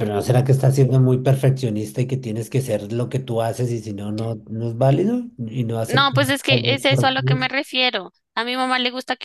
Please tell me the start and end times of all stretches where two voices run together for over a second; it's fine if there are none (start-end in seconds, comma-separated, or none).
5.9-7.4